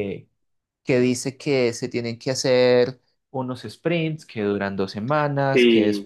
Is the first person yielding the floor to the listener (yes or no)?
no